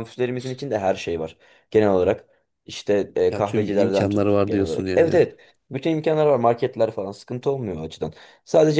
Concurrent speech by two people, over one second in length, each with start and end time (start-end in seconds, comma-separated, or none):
3.3-5.2